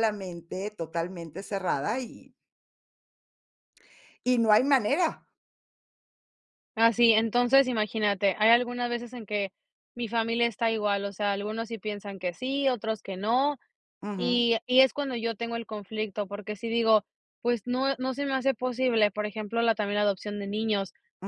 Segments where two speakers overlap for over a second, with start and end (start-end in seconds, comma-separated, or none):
none